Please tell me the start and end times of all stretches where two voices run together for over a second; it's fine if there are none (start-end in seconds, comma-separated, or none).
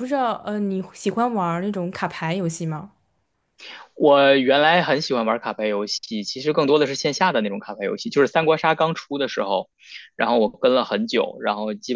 none